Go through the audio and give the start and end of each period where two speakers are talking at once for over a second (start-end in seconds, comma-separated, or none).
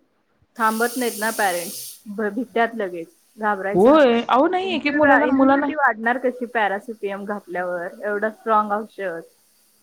3.7-5.7